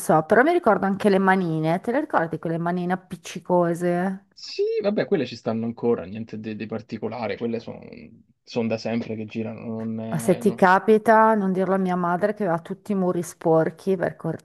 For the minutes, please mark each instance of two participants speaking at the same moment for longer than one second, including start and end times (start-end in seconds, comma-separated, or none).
none